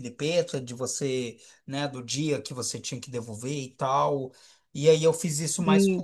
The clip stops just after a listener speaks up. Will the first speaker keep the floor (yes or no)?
yes